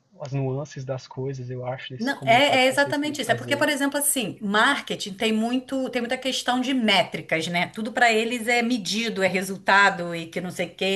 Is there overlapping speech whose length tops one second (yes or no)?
yes